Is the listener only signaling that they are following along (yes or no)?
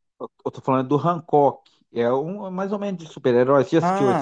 no